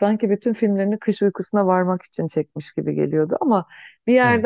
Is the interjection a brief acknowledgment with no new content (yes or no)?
yes